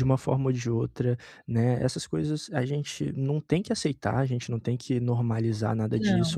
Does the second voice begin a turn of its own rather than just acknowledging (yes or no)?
no